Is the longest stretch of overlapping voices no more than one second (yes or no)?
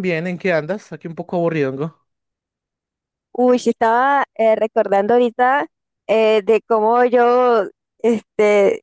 yes